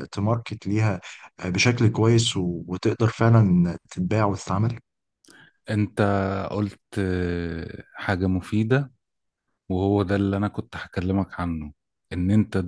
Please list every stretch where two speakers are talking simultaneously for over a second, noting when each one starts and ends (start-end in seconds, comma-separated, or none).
none